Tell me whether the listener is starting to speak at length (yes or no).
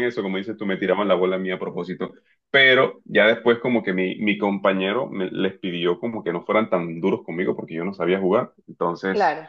no